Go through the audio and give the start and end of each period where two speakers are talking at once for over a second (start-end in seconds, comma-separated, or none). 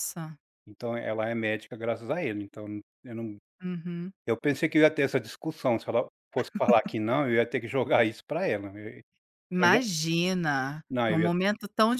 none